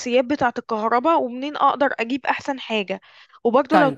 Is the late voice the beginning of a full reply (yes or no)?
no